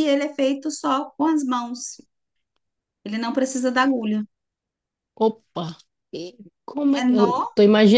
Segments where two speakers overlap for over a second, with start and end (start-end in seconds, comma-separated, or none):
none